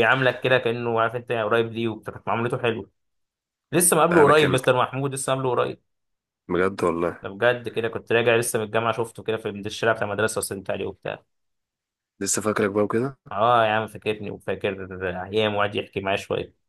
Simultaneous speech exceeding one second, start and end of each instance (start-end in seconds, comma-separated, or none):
none